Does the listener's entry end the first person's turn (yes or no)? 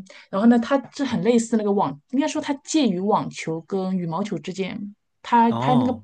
no